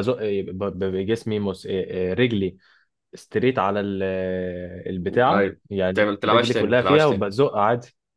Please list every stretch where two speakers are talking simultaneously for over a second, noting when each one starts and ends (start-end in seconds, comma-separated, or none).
5.3-7.3